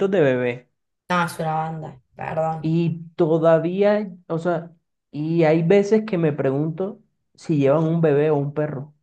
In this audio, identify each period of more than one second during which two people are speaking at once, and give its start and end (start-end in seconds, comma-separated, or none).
none